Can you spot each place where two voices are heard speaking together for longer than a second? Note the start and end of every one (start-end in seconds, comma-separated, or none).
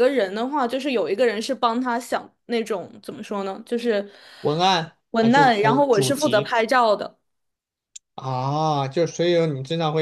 5.1-6.5